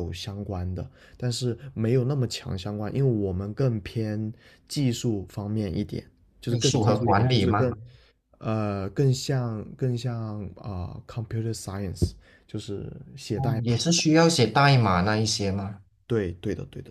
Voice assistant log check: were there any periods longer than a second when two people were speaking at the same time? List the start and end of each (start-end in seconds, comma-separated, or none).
6.5-7.8